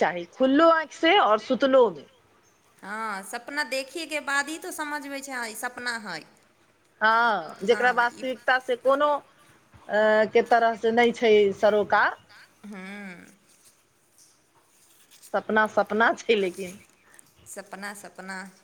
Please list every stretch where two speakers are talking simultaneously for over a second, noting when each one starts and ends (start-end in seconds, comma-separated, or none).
7.7-9.1